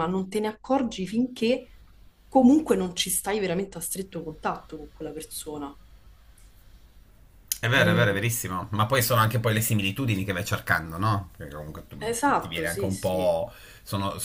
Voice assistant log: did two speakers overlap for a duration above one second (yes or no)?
yes